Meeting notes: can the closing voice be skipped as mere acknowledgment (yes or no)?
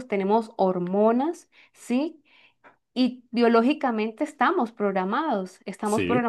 yes